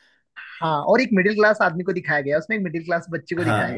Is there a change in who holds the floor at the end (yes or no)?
yes